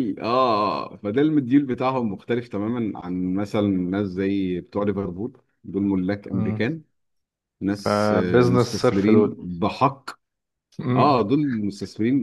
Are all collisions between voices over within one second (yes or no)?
no